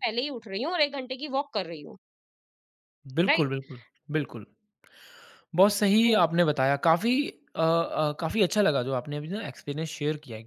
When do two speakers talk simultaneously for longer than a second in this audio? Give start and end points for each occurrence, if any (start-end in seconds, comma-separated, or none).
none